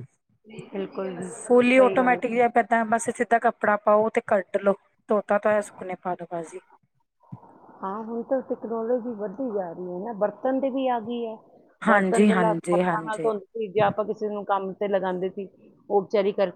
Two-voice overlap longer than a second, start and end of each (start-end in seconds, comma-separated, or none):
11.9-13.3